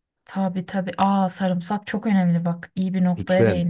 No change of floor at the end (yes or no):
no